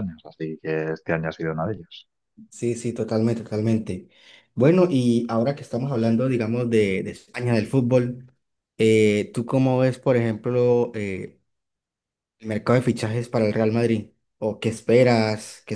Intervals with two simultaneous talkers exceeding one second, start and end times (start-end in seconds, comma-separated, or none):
none